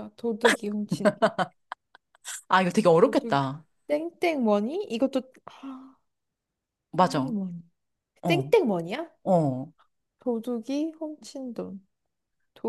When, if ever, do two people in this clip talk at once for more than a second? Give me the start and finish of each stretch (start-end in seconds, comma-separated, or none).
none